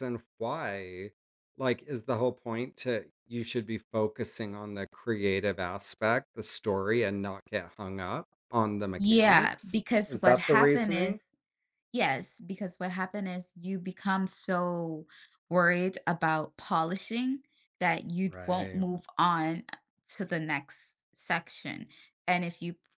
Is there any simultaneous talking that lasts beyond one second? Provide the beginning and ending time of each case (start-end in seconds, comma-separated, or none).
8.9-11.2